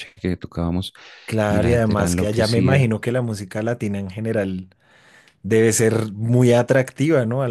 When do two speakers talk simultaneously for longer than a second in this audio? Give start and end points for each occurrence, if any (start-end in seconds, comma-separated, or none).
1.5-2.9